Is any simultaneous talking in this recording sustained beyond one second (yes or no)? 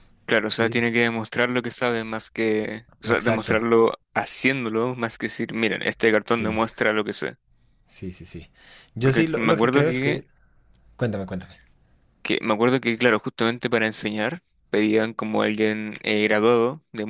yes